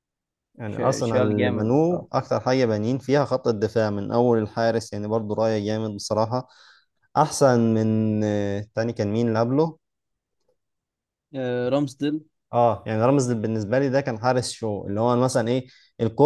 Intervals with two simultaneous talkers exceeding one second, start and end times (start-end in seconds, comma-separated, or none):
0.7-2.1